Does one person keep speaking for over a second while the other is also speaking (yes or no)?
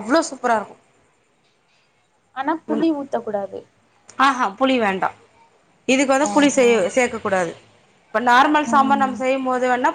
no